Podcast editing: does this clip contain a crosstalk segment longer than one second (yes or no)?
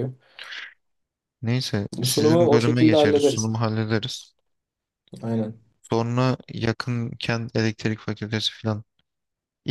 yes